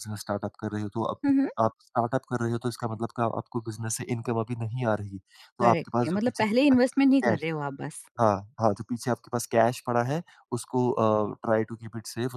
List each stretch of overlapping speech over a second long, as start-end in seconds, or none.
5.6-7.5